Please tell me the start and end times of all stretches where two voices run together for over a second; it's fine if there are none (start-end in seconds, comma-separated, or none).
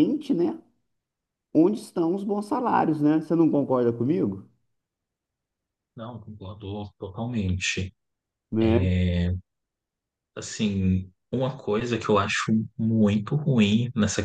none